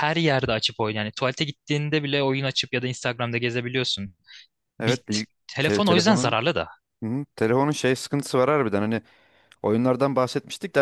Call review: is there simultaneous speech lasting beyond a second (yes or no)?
yes